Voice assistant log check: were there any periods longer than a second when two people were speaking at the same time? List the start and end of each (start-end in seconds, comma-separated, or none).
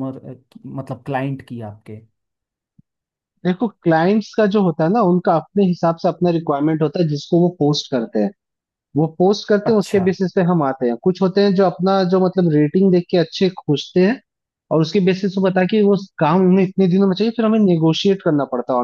none